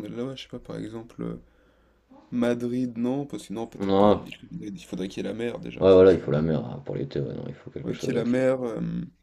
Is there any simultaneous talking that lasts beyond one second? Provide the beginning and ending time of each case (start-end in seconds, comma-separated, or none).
none